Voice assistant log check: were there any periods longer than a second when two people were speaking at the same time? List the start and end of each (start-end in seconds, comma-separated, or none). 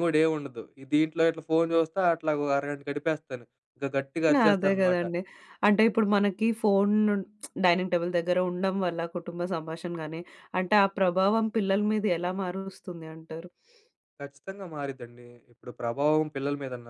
none